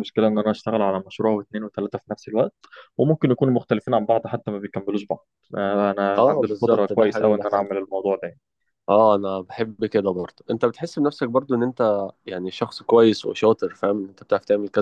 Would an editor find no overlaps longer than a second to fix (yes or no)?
no